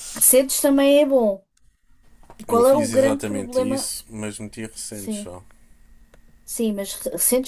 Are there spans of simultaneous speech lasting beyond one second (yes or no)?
yes